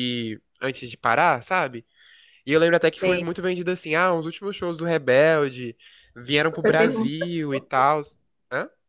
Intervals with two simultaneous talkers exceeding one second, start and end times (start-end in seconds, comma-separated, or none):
6.5-7.9